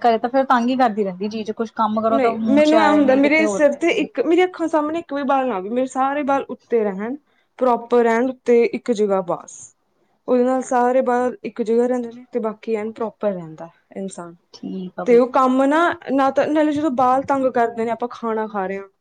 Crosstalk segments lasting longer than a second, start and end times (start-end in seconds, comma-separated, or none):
2.1-4.0